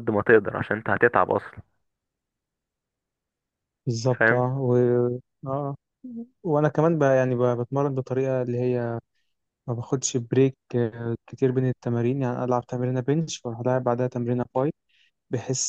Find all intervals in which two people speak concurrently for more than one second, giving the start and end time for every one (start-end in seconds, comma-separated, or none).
none